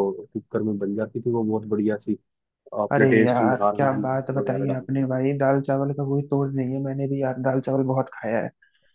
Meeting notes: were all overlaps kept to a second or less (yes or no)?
no